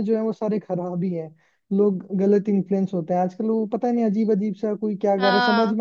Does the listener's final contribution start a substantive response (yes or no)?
no